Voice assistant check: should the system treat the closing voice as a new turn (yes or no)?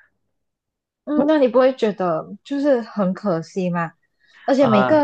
no